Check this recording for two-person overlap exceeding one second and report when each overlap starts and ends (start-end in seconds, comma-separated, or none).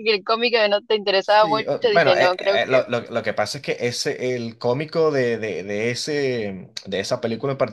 1.2-2.8